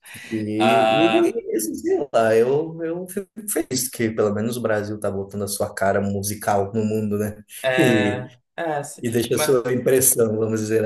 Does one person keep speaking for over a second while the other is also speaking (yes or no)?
no